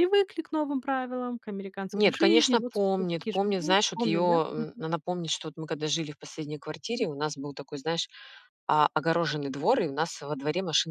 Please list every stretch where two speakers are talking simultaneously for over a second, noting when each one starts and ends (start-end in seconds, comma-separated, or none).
1.9-4.8